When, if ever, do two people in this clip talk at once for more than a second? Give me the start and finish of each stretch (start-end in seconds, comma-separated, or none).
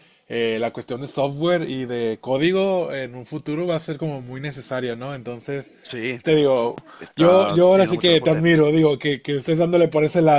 7.1-8.5